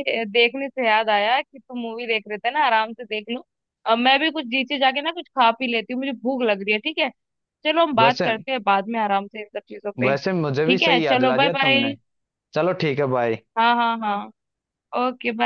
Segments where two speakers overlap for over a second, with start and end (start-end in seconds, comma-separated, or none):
10.1-11.9